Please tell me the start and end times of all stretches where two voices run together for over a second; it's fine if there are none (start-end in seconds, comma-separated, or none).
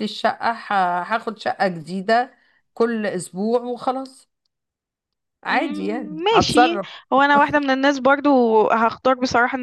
5.5-6.9